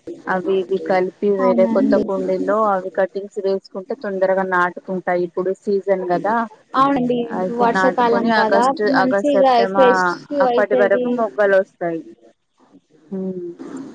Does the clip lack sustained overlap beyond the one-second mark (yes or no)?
no